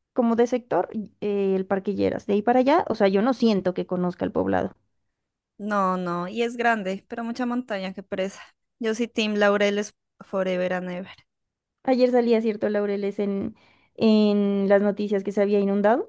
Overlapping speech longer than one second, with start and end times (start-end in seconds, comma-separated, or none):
none